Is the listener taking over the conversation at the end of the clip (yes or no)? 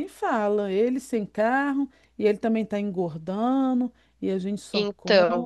no